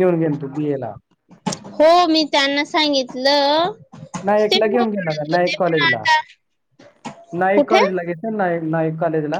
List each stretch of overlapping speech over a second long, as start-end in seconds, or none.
4.5-6.0